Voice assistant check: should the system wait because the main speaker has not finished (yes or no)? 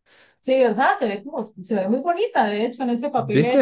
yes